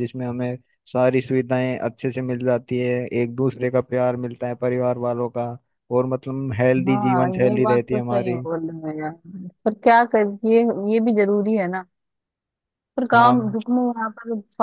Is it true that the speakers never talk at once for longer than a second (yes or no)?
no